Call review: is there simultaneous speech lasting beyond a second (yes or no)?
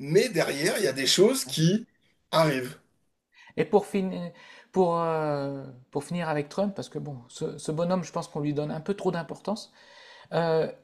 no